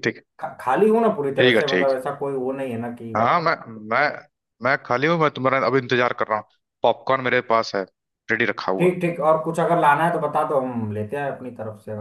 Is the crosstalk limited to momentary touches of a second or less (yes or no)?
yes